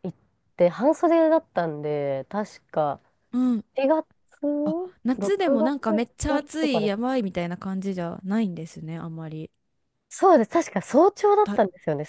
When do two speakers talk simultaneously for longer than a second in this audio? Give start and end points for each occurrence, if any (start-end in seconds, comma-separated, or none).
5.2-7.1